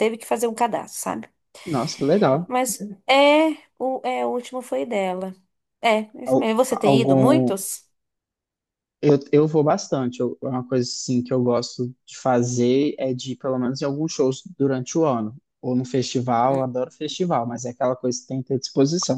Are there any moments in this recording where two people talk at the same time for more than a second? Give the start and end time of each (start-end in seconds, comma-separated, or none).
6.3-7.6